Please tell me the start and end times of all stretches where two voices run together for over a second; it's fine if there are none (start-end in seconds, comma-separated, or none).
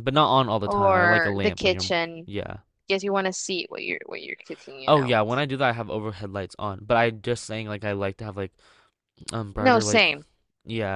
0.7-2.3